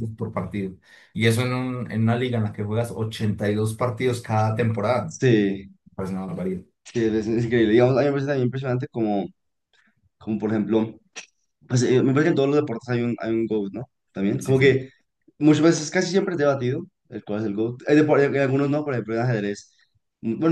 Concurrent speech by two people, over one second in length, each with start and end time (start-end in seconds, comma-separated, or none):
none